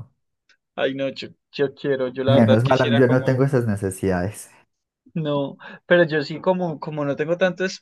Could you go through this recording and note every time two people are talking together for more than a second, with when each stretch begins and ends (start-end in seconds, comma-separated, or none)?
2.3-3.5